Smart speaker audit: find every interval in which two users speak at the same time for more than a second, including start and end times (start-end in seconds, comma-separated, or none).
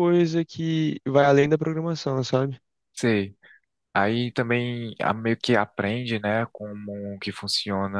none